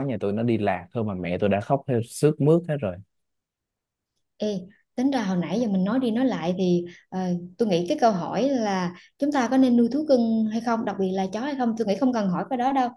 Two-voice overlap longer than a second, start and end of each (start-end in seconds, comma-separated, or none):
none